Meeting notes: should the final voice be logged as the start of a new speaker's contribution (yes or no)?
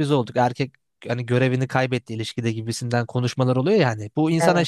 no